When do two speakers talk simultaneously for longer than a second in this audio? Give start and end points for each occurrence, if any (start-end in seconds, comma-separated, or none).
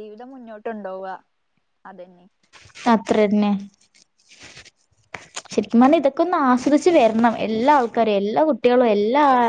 none